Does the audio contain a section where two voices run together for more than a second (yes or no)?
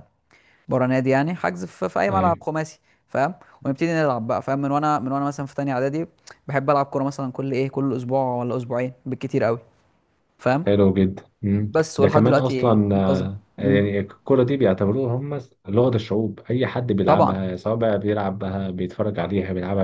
yes